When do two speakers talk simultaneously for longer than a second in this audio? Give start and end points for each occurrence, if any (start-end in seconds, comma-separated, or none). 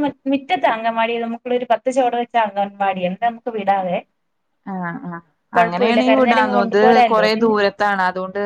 5.6-7.5